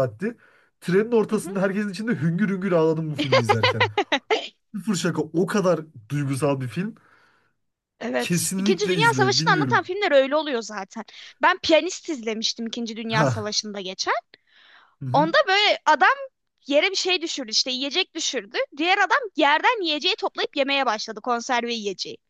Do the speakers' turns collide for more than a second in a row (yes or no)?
yes